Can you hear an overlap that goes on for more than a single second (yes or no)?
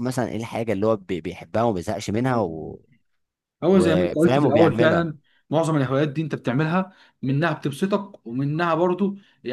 yes